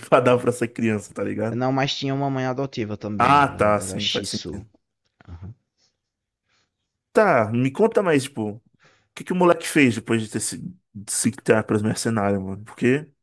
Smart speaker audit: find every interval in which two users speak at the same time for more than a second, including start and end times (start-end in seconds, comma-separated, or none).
3.2-4.7